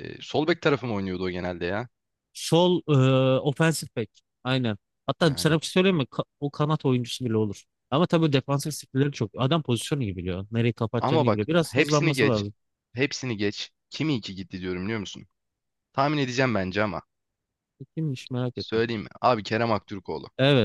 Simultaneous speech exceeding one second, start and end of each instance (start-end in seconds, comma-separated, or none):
11.0-12.4